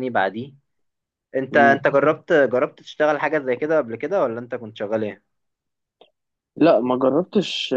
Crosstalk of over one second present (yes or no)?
no